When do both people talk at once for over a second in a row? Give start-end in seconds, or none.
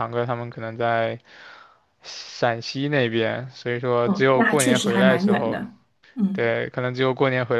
4.0-5.6